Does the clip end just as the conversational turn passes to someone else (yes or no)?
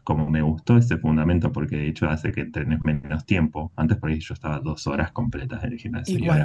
no